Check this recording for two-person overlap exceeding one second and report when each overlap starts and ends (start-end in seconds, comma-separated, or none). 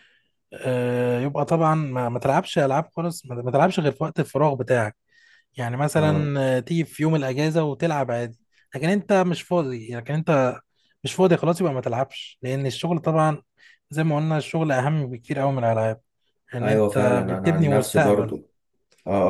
16.6-18.3